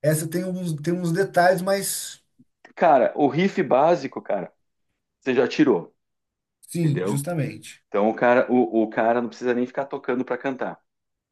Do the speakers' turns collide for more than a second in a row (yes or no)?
no